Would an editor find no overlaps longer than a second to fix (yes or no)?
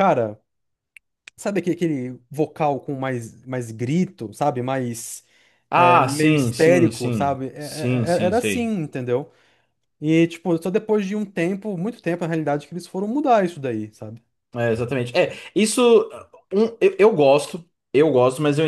no